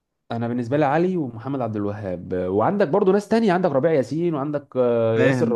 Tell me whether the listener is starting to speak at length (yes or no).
yes